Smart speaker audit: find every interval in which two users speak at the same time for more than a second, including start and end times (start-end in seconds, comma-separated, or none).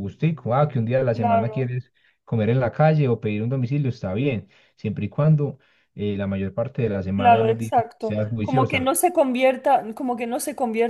7.2-8.9